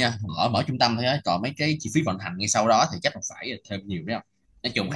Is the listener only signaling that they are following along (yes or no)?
yes